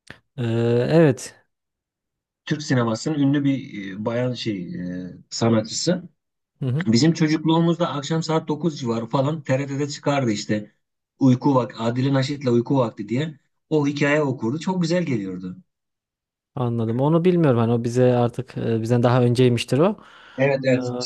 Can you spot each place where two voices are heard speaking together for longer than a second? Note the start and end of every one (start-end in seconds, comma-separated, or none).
none